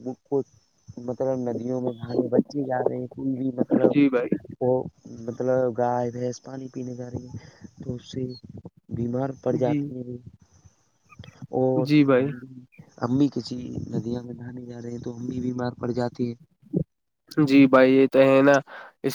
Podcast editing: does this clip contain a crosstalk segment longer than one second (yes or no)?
no